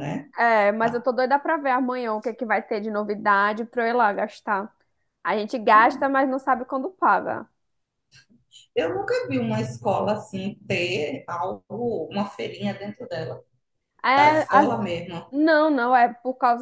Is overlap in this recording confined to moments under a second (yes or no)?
yes